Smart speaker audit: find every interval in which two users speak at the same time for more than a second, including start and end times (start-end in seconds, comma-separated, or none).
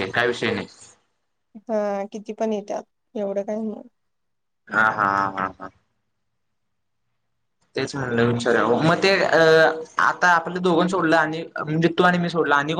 none